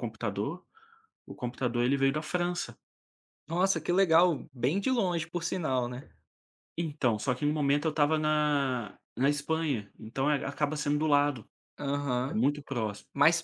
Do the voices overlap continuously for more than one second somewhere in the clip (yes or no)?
no